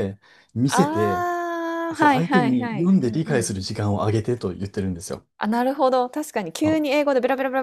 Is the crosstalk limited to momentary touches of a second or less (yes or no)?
no